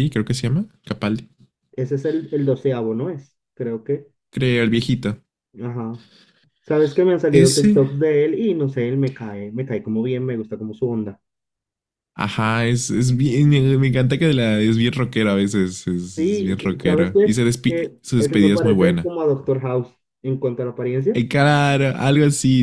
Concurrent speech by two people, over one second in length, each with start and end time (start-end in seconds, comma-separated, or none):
16.2-19.1